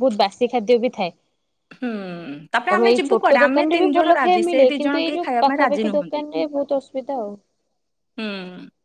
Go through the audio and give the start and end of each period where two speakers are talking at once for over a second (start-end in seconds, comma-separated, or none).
2.7-6.2